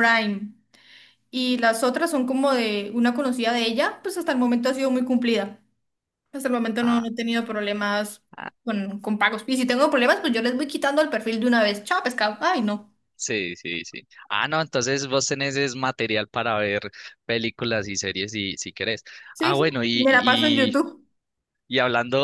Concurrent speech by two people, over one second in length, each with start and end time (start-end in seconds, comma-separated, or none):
19.3-20.8